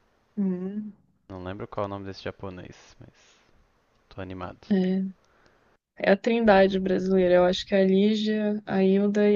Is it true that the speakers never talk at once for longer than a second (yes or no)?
yes